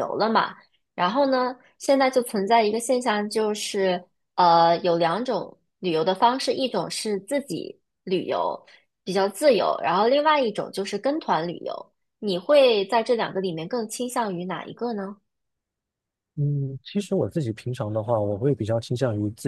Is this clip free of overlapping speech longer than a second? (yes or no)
yes